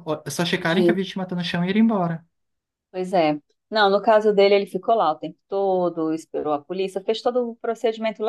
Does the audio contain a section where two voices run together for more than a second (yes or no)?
no